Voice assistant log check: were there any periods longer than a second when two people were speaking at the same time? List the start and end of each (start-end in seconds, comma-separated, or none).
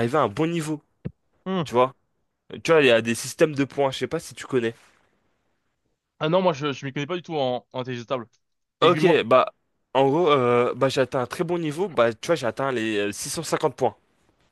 none